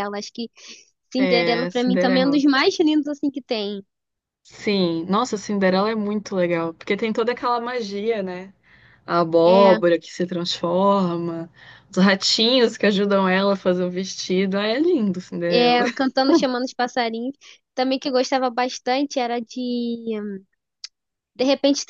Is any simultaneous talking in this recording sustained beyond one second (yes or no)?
yes